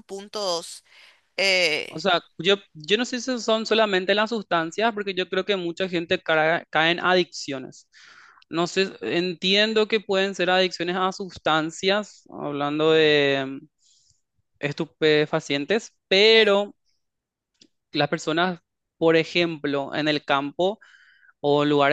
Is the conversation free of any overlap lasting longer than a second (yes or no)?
yes